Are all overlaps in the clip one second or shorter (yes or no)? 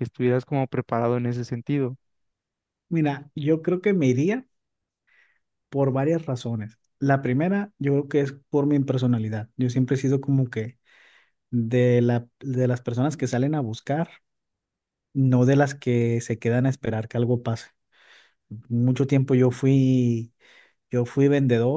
yes